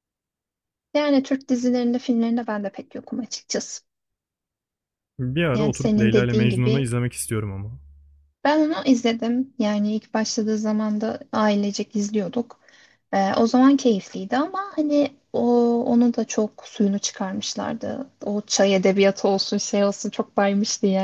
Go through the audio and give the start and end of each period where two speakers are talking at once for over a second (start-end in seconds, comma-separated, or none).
5.5-6.9